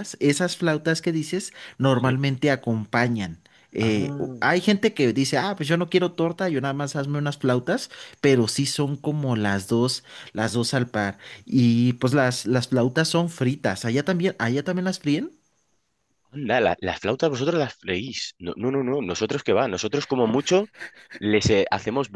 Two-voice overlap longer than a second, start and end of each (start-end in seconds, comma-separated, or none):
none